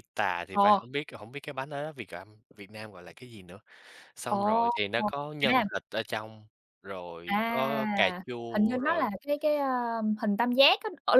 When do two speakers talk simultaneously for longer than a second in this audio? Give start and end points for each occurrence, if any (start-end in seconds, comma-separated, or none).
7.2-9.1